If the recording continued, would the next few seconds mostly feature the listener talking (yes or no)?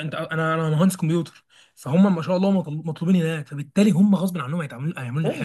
yes